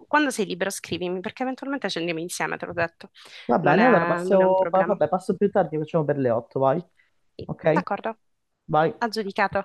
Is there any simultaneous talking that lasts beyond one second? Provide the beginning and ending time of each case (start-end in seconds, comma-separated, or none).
3.6-5.0